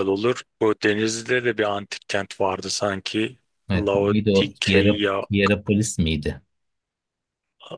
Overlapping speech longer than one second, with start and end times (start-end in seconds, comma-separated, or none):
3.7-5.2